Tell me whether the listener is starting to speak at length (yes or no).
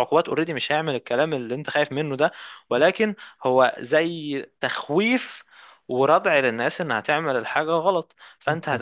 no